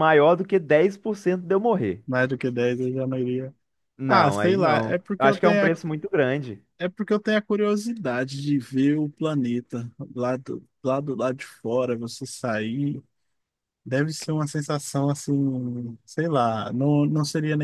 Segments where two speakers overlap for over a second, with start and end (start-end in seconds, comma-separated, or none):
4.1-5.7